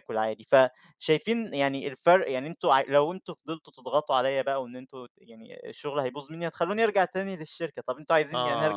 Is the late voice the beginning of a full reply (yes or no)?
yes